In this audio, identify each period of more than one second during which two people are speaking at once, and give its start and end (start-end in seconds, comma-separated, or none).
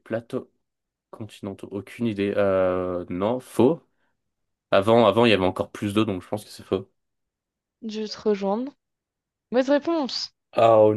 none